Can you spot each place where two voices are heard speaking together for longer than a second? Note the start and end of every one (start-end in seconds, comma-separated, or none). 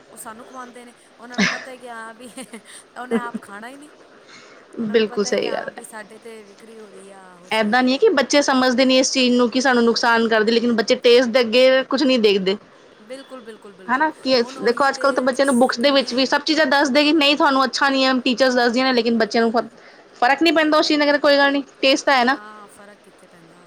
13.9-16.2